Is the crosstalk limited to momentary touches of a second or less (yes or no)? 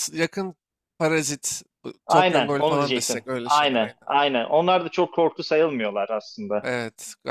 no